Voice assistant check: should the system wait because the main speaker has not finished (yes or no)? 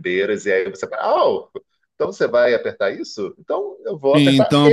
no